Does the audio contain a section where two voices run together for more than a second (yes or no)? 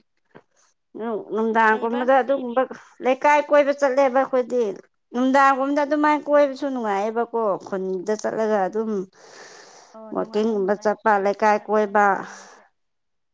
yes